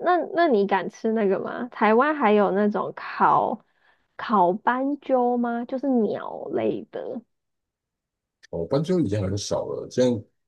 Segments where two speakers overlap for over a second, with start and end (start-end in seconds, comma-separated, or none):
none